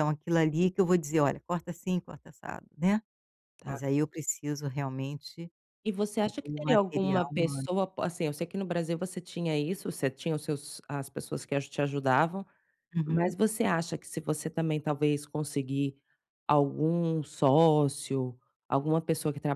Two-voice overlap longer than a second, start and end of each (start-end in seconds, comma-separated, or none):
6.2-7.7